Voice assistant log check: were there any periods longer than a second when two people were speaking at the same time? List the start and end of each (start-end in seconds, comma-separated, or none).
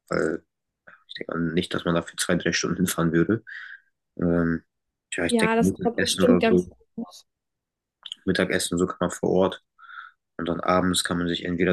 5.3-6.8